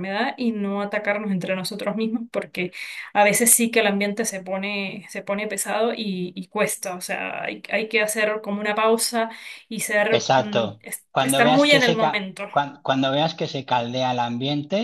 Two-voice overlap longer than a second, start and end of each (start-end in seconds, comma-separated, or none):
10.1-12.5